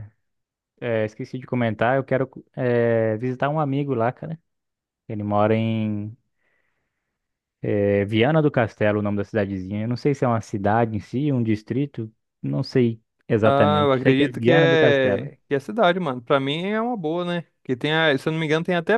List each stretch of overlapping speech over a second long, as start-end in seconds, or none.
13.4-15.3